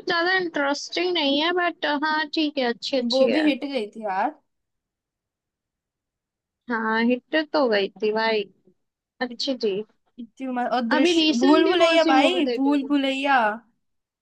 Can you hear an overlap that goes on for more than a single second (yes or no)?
yes